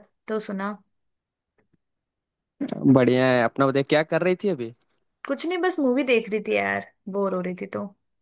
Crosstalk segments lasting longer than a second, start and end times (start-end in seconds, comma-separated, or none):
none